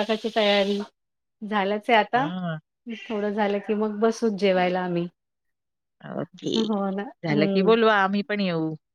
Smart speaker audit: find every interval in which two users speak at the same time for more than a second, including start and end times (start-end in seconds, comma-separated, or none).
none